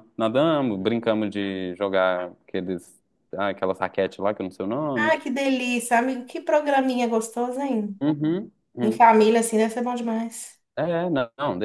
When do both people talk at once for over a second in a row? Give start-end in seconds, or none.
none